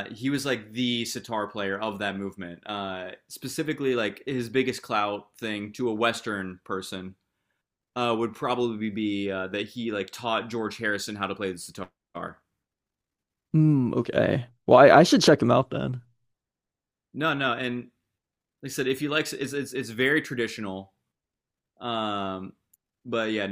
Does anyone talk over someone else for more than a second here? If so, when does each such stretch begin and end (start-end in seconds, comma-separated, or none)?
none